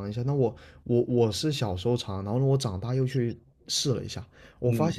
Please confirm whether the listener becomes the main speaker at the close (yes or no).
no